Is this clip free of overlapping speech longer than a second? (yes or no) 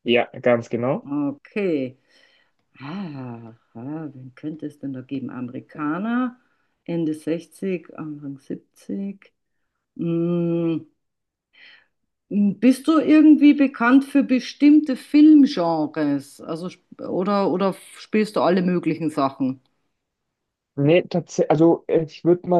yes